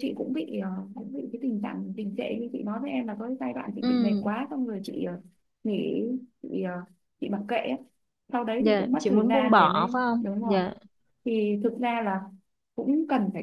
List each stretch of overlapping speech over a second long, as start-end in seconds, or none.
8.6-10.6